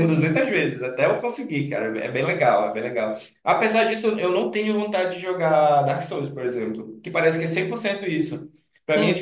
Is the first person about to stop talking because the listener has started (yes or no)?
no